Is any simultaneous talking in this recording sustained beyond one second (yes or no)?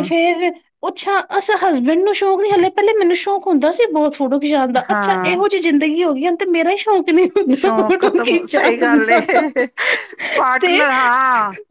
yes